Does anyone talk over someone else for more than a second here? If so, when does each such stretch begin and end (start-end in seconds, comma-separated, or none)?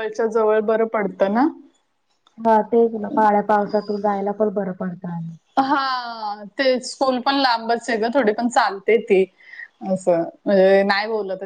none